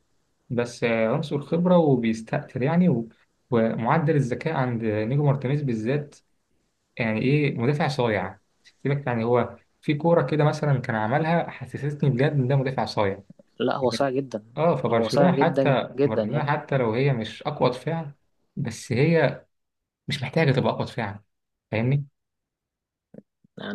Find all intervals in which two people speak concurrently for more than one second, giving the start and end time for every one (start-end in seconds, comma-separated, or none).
14.9-16.5